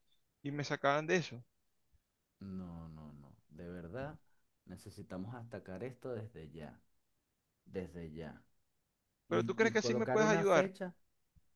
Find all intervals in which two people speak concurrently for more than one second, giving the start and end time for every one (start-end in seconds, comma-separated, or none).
9.3-10.7